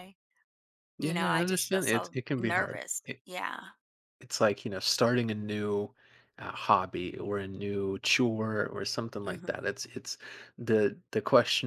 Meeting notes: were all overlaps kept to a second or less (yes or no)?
no